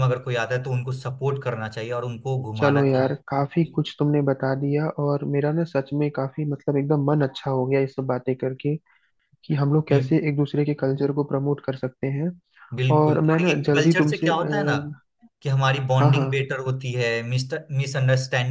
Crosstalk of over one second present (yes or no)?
yes